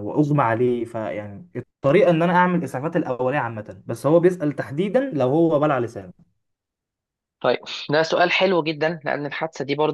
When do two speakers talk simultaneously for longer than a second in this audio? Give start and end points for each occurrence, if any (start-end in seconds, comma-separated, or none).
none